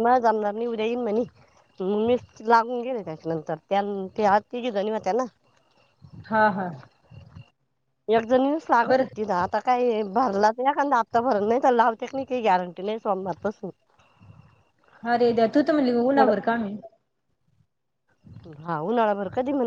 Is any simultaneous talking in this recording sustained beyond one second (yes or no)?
no